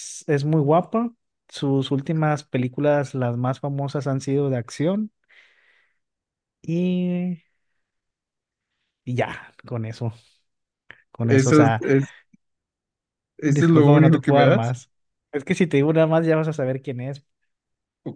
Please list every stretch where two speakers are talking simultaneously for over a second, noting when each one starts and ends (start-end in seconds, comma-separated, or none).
13.4-14.8